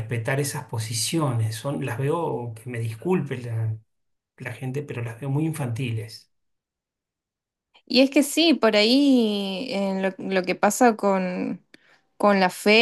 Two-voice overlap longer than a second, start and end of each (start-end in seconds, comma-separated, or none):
none